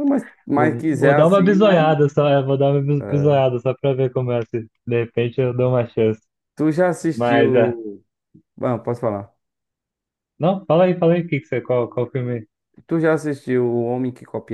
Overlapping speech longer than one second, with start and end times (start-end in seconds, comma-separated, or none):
0.6-1.9